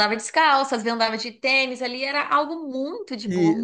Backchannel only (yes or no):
no